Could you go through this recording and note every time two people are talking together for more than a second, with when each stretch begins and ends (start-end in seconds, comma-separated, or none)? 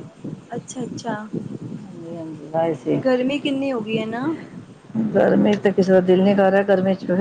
none